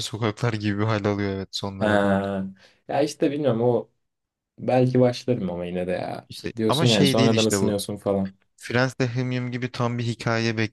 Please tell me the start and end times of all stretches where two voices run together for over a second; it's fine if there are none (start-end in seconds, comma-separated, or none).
6.3-7.7